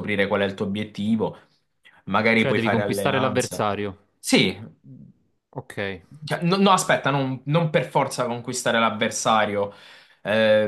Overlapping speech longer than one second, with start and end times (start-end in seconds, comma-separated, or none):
2.3-3.6